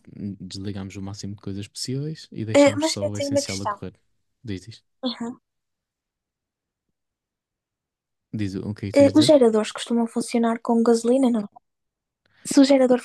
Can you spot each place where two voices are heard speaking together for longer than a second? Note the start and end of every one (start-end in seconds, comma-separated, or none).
2.5-3.8